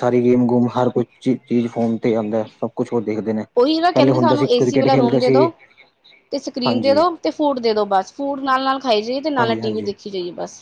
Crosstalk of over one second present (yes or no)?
yes